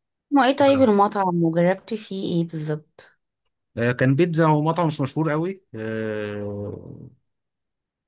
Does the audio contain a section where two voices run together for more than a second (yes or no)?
no